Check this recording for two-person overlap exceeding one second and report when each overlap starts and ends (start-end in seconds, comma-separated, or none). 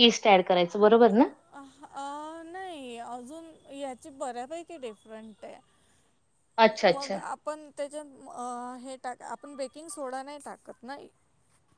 none